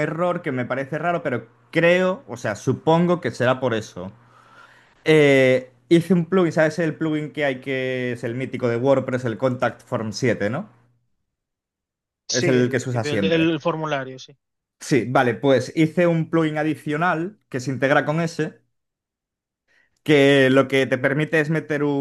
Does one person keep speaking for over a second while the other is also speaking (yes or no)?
yes